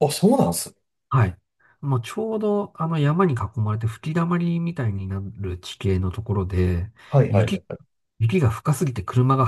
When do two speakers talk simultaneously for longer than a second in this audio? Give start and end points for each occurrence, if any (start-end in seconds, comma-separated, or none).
none